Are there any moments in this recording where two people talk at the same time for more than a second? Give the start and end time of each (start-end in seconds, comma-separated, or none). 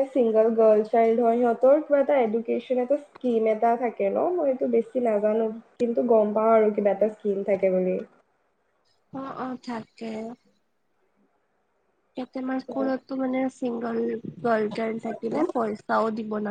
none